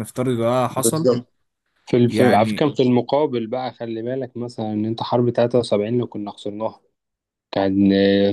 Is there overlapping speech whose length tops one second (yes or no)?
no